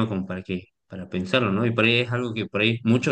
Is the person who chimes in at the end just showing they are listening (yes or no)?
yes